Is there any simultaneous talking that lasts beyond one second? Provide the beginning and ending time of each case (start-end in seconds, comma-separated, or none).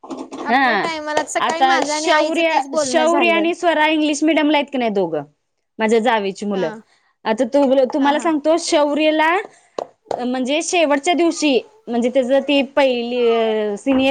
1.5-3.4